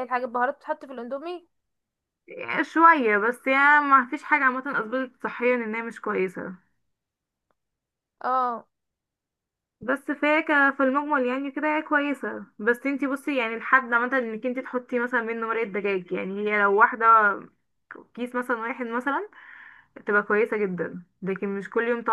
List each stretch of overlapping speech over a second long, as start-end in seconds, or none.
none